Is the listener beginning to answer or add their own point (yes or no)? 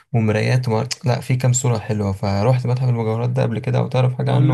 yes